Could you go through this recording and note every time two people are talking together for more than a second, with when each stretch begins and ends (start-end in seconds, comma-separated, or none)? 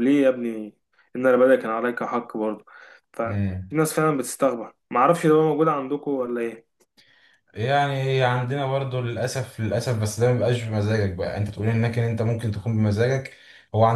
none